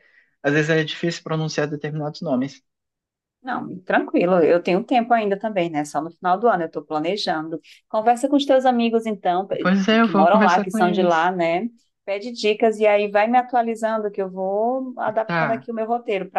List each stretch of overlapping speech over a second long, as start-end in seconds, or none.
9.6-11.3